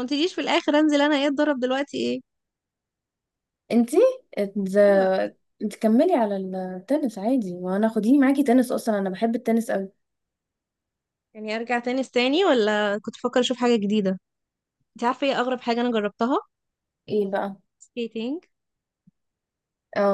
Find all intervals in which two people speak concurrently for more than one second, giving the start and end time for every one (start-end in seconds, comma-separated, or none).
none